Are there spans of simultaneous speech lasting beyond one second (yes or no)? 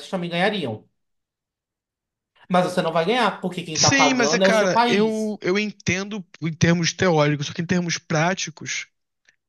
yes